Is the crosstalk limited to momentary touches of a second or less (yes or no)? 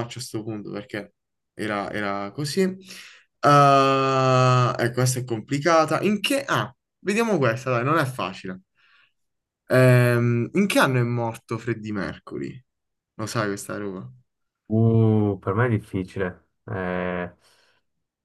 yes